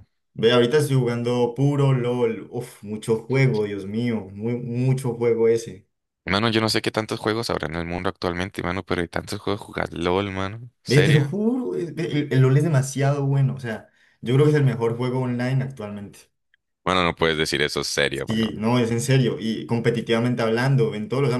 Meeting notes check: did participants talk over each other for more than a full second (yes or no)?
no